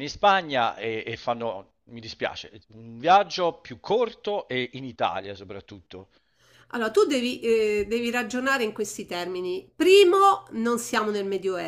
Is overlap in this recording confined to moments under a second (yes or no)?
yes